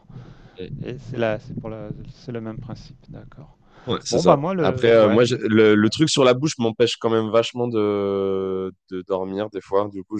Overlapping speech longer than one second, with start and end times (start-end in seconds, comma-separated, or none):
4.1-5.4